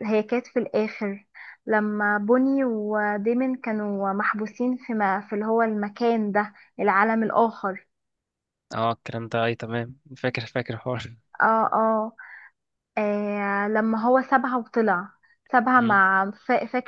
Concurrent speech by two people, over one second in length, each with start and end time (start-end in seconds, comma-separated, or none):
none